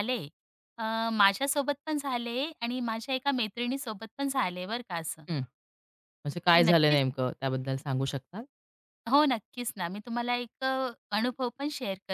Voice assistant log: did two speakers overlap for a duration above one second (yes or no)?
no